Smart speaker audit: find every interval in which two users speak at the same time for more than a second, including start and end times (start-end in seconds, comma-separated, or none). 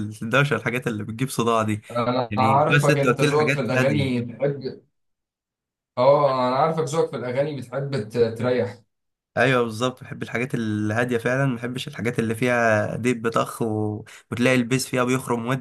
2.3-4.1